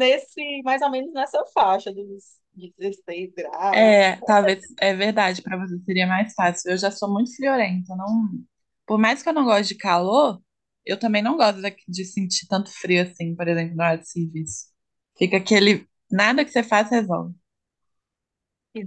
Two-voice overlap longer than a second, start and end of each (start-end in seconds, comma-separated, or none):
none